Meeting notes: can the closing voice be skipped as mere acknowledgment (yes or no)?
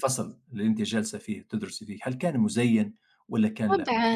no